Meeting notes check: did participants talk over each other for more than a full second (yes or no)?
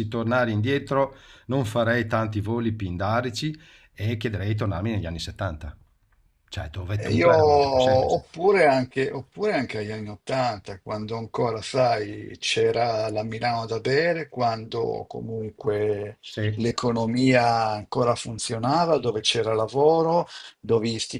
yes